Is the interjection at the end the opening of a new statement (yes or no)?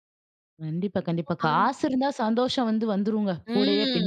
yes